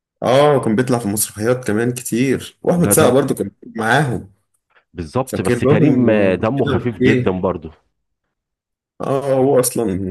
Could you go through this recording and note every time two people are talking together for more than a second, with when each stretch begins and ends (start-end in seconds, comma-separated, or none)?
5.3-7.3